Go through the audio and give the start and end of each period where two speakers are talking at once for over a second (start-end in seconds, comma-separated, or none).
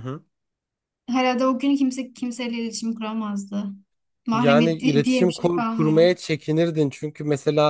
4.3-6.0